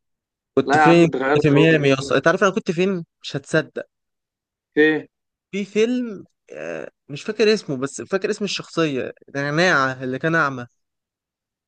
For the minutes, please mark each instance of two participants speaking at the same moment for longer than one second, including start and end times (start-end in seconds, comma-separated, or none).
0.7-2.2